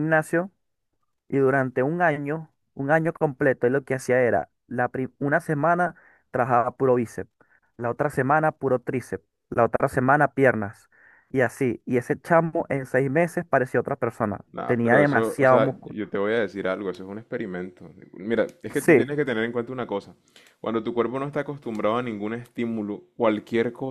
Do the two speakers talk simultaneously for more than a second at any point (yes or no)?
yes